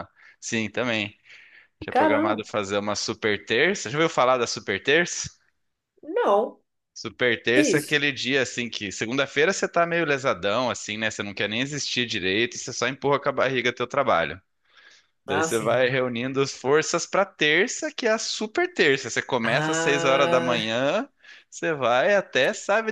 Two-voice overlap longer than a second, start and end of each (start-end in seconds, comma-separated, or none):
19.4-20.7